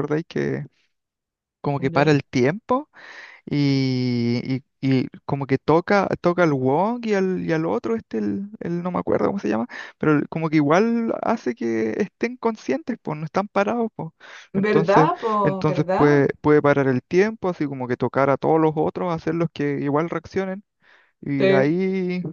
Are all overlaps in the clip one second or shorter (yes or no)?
no